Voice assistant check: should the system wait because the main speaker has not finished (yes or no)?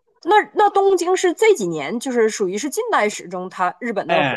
no